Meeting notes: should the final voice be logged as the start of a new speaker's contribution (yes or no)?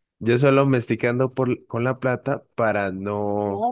no